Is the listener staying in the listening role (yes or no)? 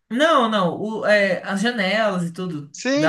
no